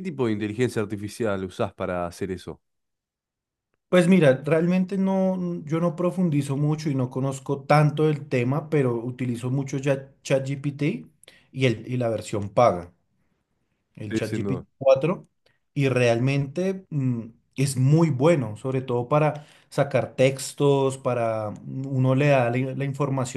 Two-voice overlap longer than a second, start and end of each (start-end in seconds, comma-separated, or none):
none